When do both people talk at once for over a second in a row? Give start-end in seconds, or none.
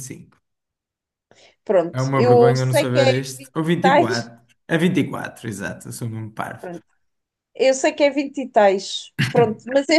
1.9-3.1